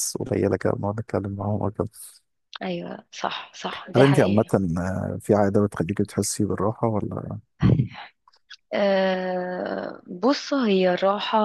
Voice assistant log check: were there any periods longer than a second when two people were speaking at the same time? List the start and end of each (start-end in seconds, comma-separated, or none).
none